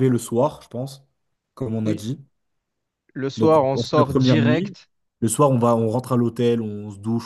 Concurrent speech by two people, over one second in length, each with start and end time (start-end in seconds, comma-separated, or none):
3.4-4.8